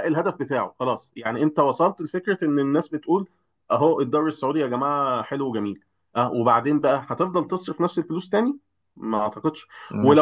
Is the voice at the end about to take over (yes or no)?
no